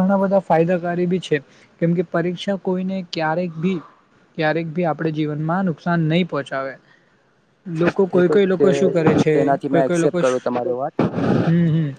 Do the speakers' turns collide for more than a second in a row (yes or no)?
yes